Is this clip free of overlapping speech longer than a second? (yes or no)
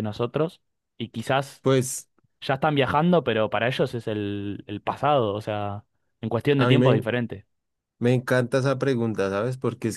yes